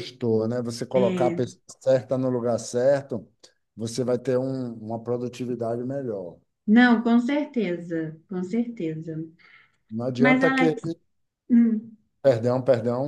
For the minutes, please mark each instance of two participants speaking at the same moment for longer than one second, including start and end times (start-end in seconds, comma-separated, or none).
none